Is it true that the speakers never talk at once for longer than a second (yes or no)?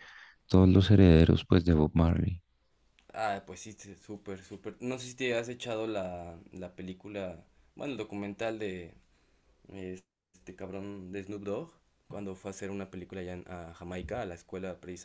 yes